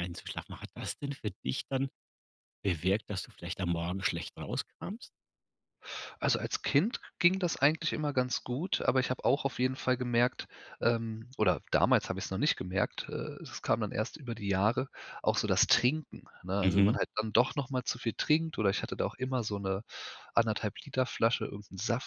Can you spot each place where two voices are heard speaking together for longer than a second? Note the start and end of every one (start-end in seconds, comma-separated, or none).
none